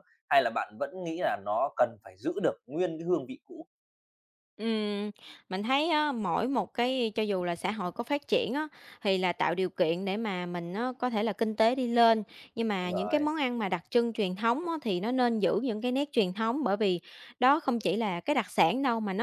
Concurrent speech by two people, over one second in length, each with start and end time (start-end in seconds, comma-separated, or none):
none